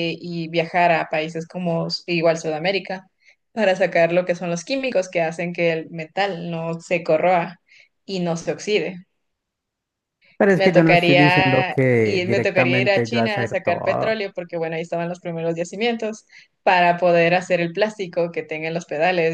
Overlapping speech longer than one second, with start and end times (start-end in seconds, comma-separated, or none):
10.5-14.2